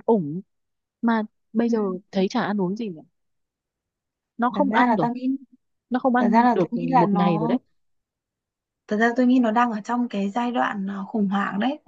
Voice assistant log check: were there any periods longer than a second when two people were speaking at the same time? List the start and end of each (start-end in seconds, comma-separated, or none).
6.2-7.5